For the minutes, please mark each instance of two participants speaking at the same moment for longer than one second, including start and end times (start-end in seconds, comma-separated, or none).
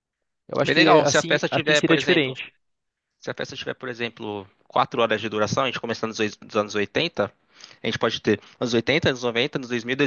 0.6-2.4